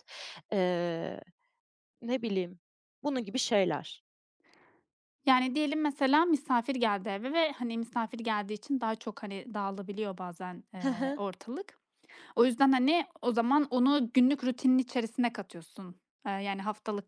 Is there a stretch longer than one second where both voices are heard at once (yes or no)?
no